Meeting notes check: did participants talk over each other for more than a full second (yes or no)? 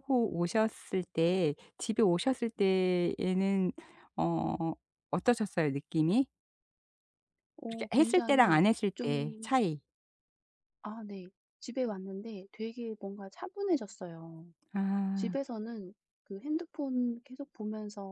yes